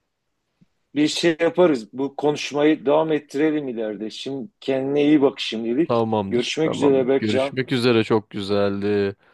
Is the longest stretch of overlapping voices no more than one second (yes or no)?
no